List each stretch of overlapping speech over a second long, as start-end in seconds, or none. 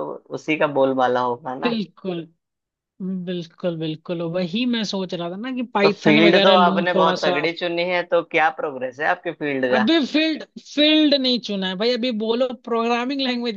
5.8-7.4